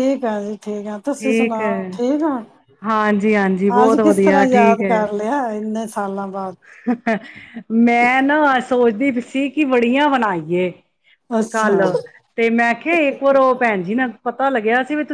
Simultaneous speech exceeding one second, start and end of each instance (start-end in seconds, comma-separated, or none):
3.9-5.3